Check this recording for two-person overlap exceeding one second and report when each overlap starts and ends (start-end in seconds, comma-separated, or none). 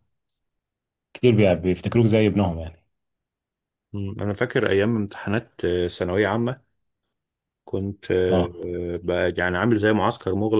none